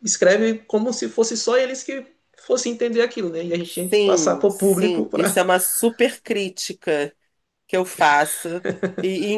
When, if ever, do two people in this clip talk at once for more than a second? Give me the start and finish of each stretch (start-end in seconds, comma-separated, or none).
3.9-5.4